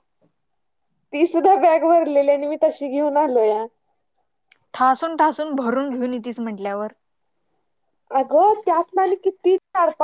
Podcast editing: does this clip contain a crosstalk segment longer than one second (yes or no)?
no